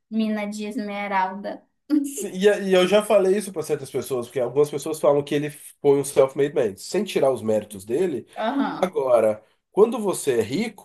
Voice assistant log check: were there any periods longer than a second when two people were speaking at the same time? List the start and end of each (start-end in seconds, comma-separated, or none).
none